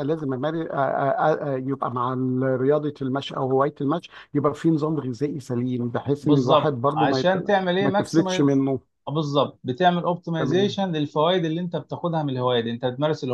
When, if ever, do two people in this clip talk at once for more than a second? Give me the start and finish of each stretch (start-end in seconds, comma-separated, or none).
6.2-8.6